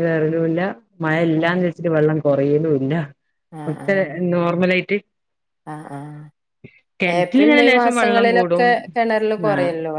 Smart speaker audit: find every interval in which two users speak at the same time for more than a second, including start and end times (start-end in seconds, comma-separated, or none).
7.2-8.6